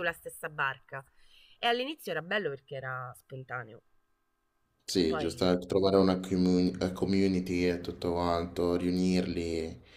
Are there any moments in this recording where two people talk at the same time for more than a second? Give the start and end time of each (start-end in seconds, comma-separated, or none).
none